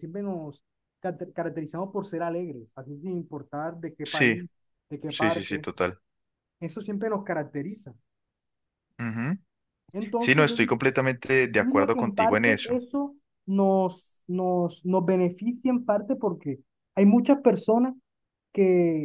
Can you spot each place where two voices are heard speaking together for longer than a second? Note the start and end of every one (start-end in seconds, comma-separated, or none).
11.6-12.8